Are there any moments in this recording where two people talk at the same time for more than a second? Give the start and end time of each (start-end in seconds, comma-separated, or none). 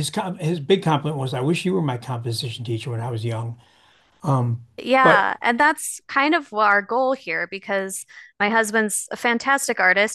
none